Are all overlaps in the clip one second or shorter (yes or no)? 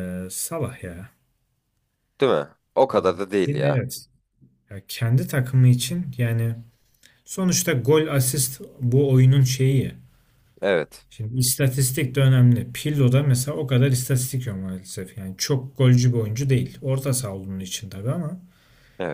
yes